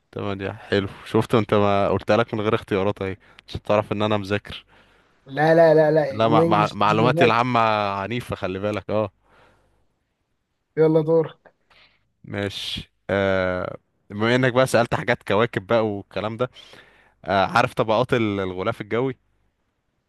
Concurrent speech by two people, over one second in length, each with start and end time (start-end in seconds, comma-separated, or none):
6.1-7.4